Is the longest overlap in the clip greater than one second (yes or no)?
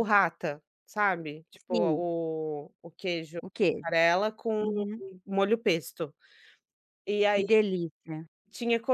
no